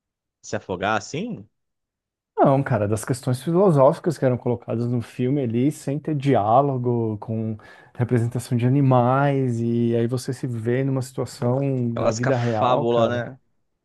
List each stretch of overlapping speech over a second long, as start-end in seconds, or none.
11.9-13.2